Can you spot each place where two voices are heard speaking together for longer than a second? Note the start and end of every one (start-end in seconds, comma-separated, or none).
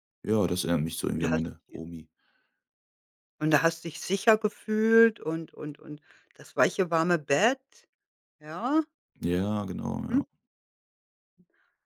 none